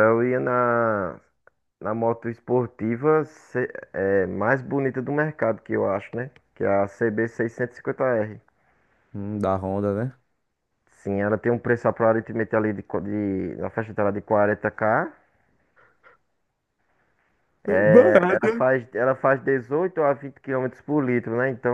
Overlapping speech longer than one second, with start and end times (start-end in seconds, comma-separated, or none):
none